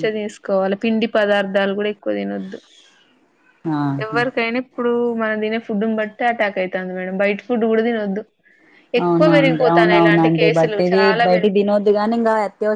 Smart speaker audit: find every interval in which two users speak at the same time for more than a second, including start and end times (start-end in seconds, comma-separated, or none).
9.0-11.2